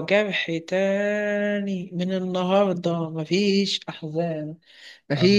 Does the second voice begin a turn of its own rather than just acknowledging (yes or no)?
no